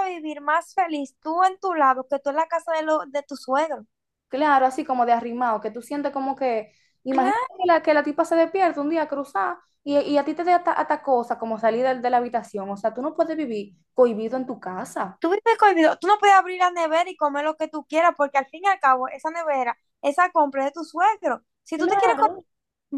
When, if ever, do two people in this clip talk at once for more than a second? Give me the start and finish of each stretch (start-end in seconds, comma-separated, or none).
none